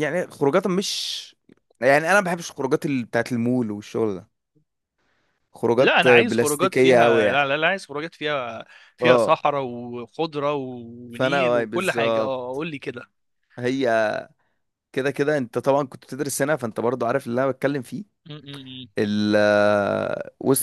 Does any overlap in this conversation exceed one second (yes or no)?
yes